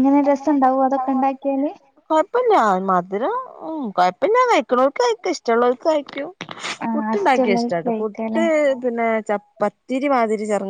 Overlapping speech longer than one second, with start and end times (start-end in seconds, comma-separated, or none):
6.9-8.4